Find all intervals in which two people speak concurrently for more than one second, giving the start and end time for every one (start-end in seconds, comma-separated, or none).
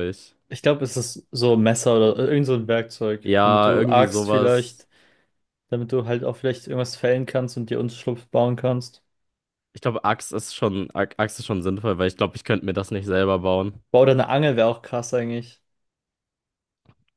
3.2-4.9